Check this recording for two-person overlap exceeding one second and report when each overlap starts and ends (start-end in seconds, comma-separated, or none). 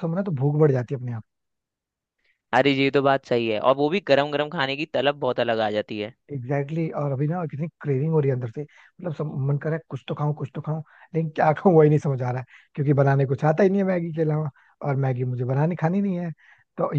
none